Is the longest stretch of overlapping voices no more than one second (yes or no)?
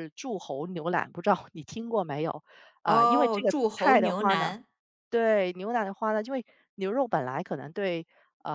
no